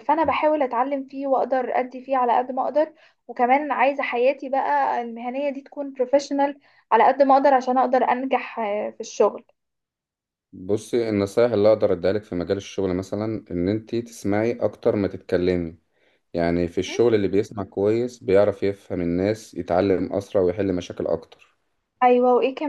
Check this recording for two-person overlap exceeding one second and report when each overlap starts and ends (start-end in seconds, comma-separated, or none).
none